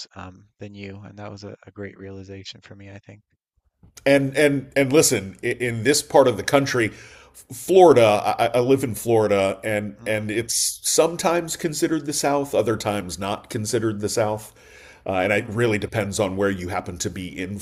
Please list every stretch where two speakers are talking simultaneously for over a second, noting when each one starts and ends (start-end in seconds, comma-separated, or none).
none